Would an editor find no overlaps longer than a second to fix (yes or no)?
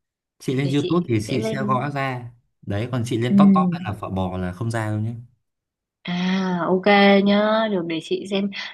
no